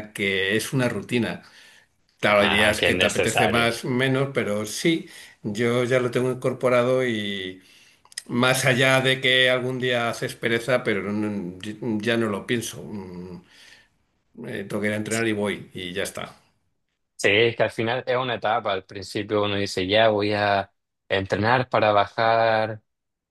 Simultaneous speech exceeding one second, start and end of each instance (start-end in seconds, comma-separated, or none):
2.4-3.7